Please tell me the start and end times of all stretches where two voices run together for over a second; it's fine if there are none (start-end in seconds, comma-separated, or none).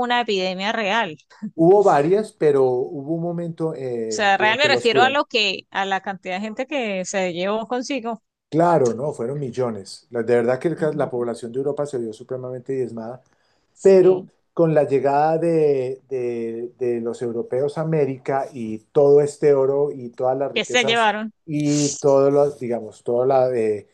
3.9-5.2